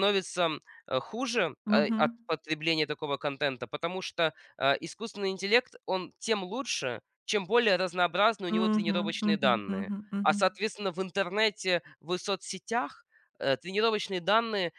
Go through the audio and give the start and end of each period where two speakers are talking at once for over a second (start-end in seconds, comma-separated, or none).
8.5-10.4